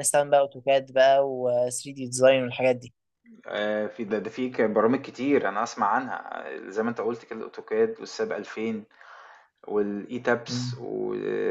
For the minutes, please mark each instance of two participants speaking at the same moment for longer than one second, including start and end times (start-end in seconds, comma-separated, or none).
none